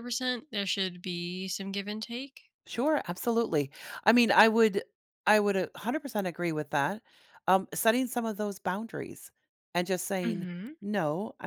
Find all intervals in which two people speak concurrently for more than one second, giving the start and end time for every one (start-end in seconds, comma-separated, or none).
none